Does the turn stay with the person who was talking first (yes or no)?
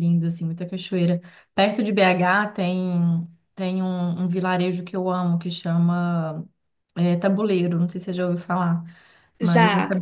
yes